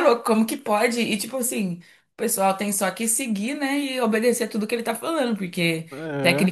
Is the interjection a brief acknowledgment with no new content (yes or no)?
yes